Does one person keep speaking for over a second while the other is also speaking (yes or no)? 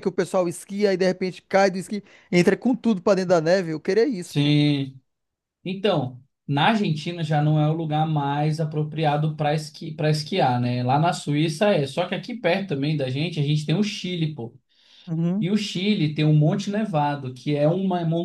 no